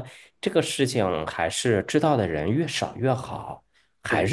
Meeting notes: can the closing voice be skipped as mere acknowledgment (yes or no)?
yes